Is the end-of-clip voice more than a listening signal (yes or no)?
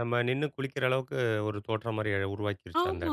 yes